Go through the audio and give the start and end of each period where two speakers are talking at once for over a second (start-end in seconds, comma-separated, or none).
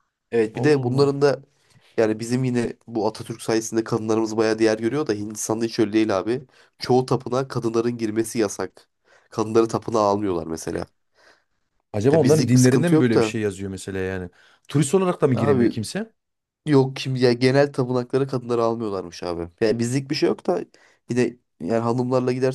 12.1-13.4